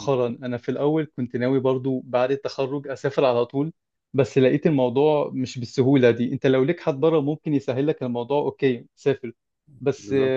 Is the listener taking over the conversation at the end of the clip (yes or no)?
no